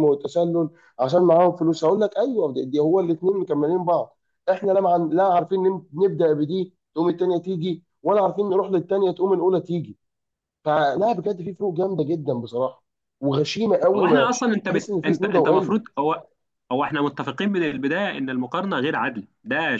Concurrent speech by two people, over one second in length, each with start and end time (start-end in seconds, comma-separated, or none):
13.9-15.8